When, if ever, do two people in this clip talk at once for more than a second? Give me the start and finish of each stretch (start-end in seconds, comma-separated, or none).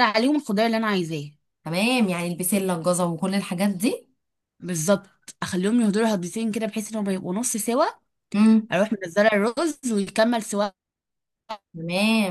none